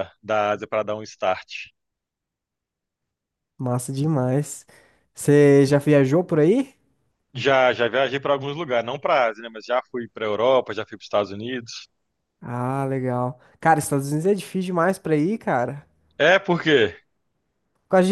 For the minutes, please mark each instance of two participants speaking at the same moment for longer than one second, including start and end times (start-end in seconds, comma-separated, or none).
none